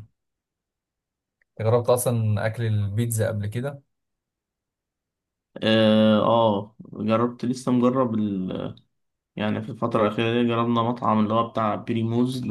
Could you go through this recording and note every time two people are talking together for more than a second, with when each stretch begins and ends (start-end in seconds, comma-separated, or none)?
none